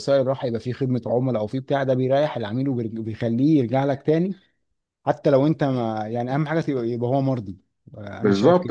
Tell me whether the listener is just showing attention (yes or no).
no